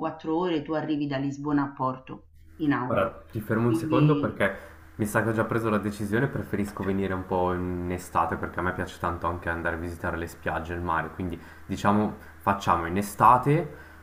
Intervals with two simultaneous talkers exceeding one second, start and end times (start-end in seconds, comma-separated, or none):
2.8-4.4